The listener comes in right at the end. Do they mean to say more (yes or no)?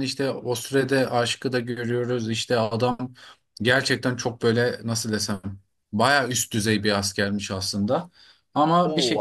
yes